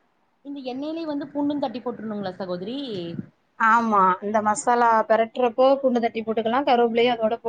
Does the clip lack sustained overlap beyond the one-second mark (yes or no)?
yes